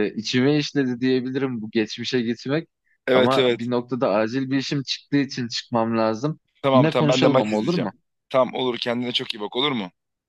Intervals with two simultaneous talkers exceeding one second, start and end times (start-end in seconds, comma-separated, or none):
6.6-7.9